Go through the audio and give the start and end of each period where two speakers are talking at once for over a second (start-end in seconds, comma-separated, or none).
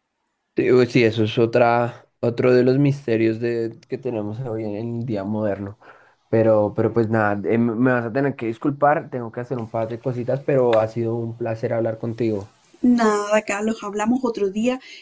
none